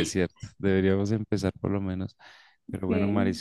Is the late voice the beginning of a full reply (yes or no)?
no